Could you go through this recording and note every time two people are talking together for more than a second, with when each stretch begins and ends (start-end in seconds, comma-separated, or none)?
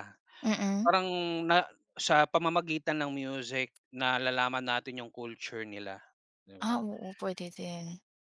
none